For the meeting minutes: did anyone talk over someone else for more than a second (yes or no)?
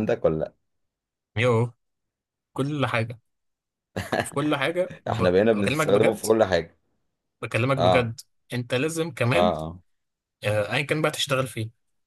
yes